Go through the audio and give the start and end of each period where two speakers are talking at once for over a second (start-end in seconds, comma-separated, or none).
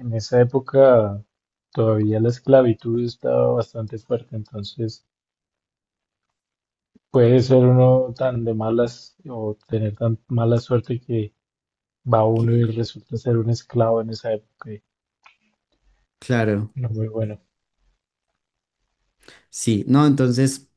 none